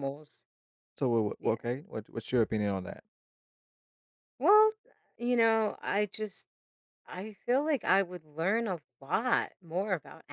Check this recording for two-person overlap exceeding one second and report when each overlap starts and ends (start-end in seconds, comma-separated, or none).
none